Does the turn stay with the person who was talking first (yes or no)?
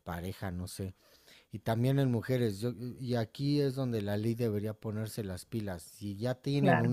yes